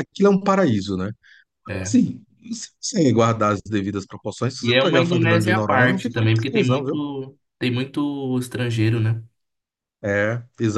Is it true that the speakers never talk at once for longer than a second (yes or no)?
no